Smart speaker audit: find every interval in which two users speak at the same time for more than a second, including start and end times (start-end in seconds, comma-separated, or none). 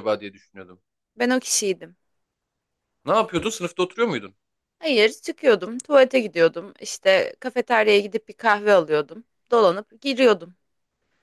none